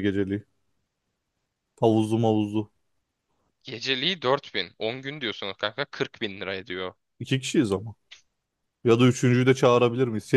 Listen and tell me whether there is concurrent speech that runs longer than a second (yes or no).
no